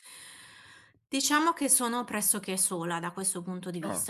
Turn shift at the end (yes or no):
no